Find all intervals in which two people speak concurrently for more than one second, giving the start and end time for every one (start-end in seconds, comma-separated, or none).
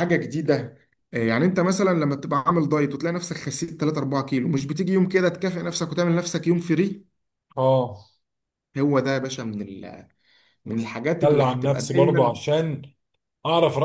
10.7-12.4